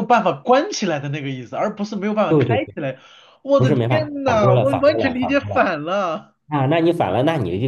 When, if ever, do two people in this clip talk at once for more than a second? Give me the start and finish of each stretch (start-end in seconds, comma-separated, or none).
3.6-5.6